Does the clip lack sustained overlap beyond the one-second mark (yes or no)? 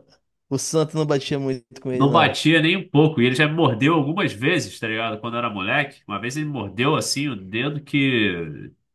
yes